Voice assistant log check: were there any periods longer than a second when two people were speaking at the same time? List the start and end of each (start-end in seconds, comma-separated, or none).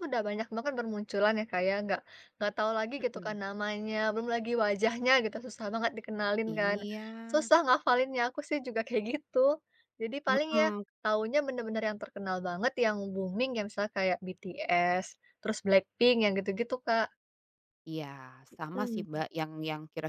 none